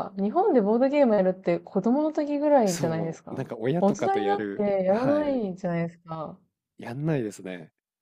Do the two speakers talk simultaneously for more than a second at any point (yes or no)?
yes